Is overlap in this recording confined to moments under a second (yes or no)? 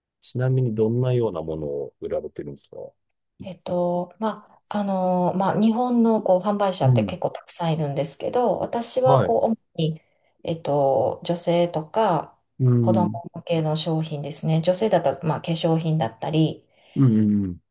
yes